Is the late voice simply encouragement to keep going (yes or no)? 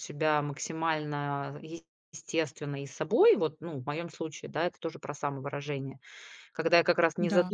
yes